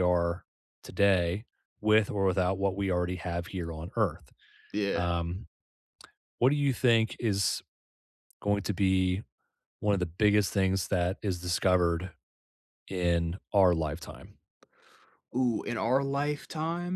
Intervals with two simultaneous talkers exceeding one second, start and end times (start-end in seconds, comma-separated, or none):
none